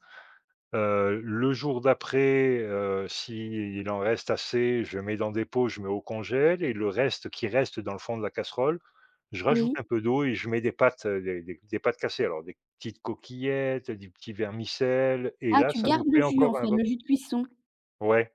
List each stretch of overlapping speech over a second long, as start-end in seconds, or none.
15.5-16.9